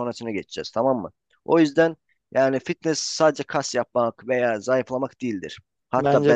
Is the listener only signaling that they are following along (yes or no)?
yes